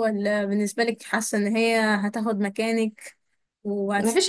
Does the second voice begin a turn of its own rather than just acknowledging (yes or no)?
yes